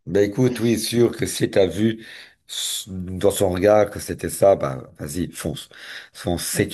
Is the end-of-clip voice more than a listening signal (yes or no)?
no